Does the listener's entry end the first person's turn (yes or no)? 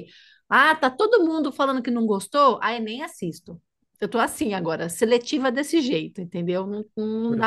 yes